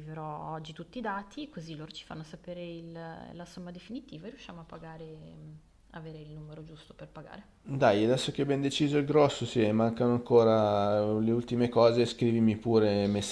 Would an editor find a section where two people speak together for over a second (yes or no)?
no